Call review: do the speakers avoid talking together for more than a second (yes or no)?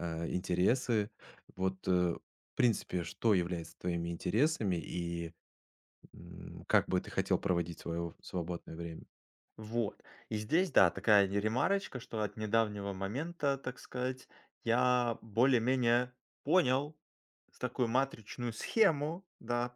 yes